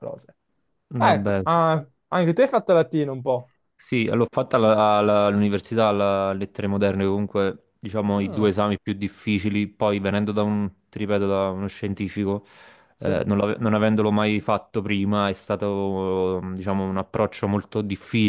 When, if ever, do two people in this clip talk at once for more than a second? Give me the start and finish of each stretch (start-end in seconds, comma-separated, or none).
none